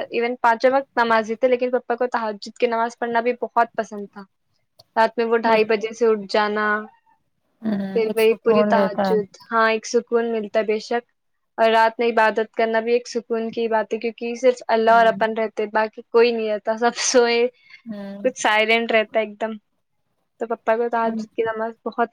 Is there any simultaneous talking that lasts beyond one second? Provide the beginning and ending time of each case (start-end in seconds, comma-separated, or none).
7.9-9.3